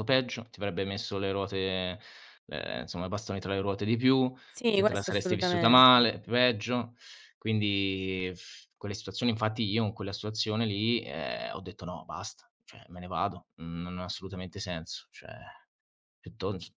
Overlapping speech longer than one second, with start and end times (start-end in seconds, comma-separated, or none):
4.7-6.1